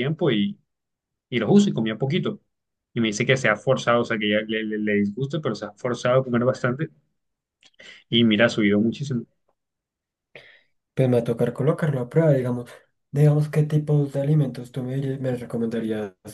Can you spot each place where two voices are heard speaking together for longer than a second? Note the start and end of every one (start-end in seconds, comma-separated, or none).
none